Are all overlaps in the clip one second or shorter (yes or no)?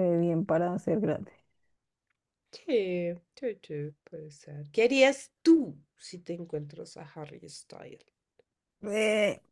yes